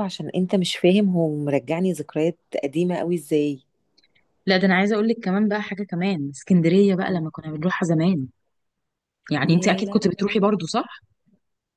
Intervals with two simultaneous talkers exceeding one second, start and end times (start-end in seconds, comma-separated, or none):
9.4-10.7